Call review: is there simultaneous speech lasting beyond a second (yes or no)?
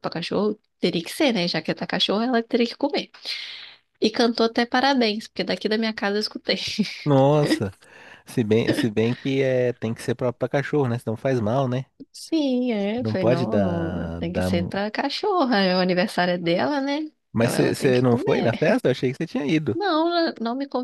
yes